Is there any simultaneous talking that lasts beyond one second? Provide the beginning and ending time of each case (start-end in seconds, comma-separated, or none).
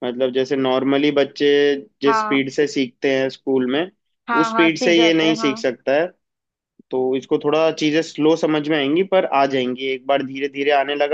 4.4-5.7